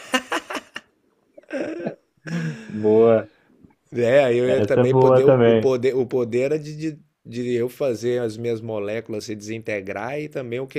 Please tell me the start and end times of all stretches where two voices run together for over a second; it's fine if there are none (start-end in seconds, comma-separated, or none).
4.4-5.7